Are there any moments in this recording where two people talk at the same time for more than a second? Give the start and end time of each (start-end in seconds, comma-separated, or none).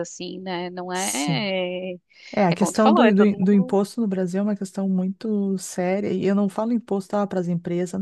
2.5-3.8